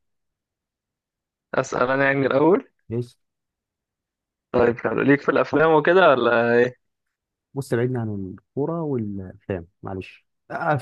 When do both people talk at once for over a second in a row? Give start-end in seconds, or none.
none